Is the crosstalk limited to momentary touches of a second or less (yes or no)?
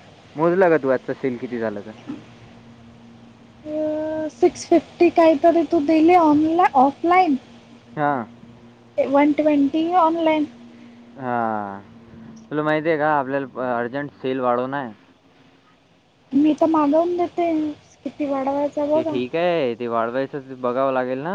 yes